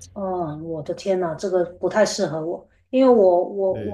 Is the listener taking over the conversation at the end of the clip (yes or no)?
no